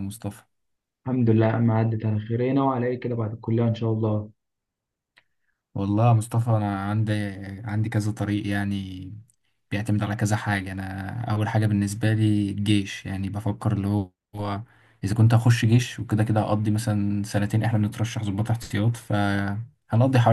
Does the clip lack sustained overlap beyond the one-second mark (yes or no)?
yes